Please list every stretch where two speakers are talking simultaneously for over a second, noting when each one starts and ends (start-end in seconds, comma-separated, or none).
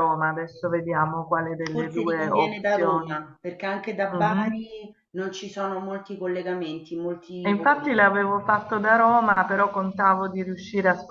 1.7-3.2